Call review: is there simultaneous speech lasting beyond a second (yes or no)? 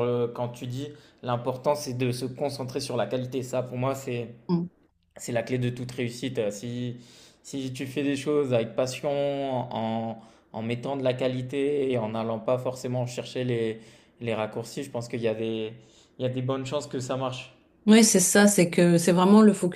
no